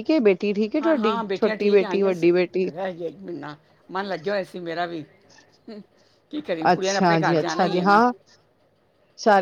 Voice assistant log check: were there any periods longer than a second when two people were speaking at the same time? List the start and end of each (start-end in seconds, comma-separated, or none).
0.8-2.5, 6.7-8.0